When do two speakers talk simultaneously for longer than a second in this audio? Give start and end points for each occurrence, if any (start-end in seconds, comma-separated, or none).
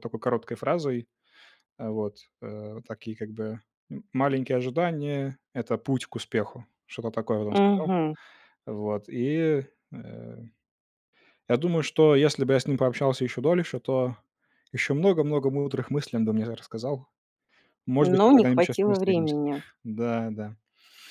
18.0-19.4